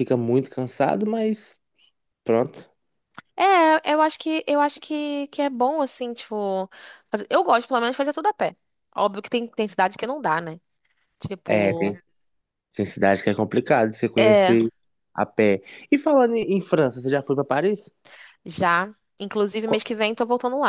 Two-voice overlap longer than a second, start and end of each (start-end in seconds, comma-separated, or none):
none